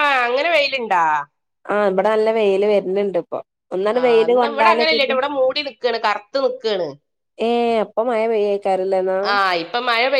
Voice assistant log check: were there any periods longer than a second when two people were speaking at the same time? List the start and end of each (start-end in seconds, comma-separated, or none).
none